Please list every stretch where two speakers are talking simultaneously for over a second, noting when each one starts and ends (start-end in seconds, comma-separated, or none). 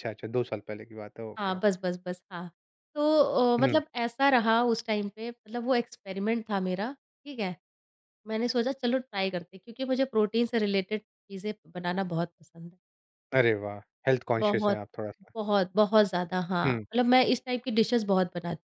none